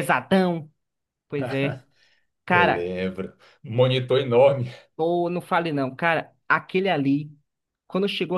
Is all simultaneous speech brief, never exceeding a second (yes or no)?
yes